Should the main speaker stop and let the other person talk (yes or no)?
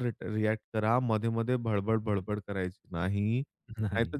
no